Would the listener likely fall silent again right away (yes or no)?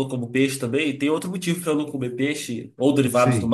yes